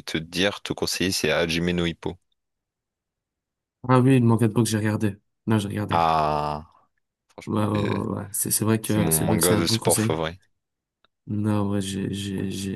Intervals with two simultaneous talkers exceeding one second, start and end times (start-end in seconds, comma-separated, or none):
8.8-10.2